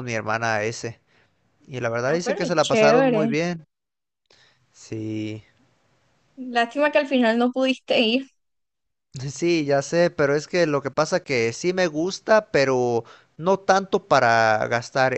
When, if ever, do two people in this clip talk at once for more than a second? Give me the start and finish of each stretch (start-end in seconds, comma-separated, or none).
2.0-3.3